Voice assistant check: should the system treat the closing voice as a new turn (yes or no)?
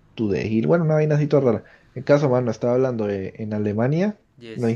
no